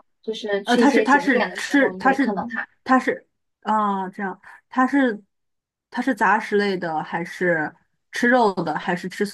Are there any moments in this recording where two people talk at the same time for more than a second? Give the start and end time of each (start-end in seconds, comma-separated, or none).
0.6-2.3